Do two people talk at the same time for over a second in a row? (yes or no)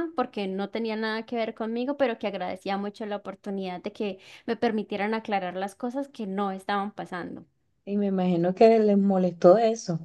no